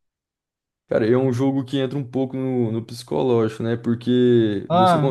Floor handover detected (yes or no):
no